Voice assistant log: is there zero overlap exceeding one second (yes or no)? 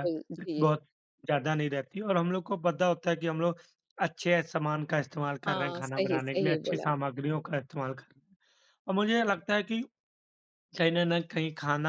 no